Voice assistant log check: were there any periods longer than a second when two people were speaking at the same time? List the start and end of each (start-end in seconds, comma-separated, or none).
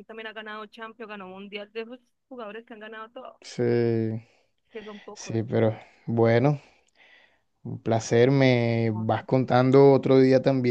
none